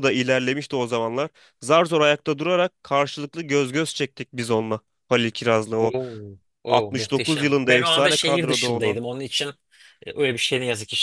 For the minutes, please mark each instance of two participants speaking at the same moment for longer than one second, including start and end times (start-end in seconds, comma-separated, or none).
6.7-9.0